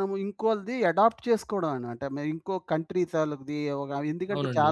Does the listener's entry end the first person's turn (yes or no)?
no